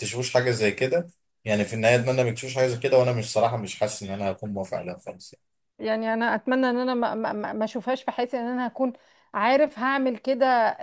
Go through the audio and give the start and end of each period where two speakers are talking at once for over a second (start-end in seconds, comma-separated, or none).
none